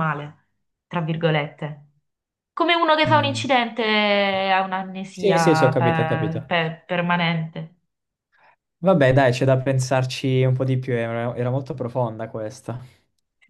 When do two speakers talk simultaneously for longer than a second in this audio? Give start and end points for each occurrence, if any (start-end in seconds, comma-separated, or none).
5.1-6.5